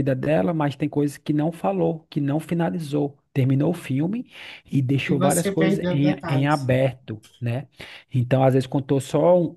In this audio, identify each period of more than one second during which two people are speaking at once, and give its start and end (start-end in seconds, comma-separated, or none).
5.1-6.7